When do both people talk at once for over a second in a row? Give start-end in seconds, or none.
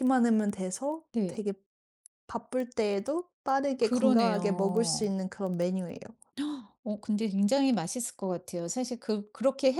3.8-5.1